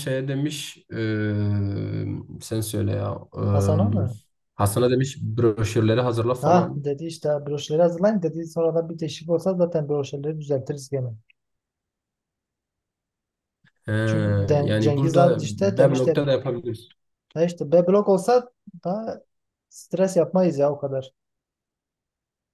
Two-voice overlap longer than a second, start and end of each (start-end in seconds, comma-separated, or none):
14.6-16.2